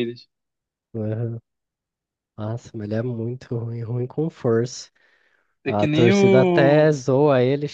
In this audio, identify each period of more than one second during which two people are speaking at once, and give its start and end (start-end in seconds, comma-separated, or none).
5.7-7.0